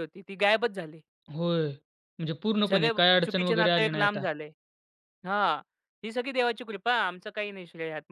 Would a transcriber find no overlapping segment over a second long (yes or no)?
no